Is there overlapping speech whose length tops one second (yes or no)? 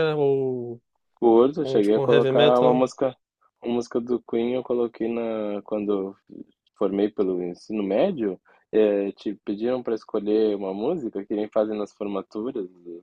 yes